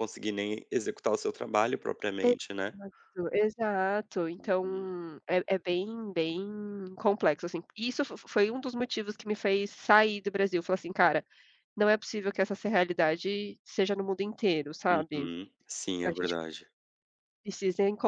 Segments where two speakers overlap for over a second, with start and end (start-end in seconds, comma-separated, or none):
none